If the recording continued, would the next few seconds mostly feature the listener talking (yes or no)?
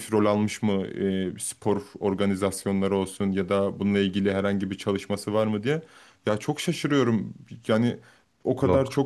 no